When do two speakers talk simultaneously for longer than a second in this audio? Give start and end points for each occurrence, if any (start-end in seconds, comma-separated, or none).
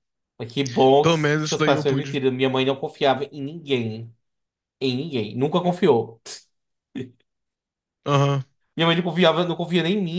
1.0-2.2